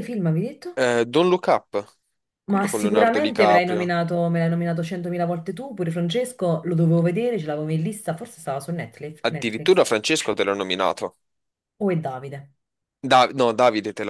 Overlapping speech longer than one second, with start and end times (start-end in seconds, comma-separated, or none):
2.5-3.9